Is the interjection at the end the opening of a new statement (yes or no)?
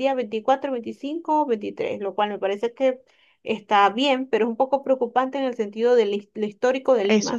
no